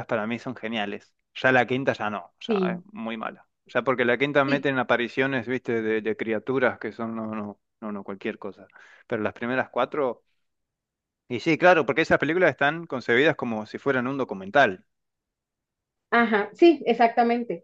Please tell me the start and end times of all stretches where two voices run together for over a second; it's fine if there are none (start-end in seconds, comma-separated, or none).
none